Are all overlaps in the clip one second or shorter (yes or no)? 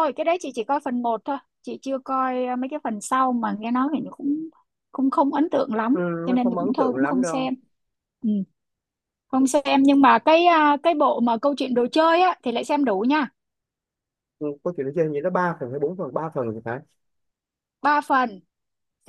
no